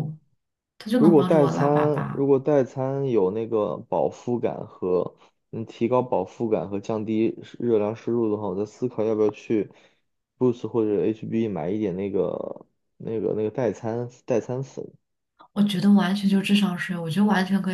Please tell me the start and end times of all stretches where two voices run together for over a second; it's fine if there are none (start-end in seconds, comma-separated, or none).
1.0-2.2